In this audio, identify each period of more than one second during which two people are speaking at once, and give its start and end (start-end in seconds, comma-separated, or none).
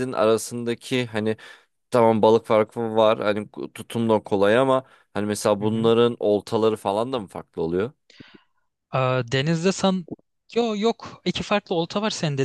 none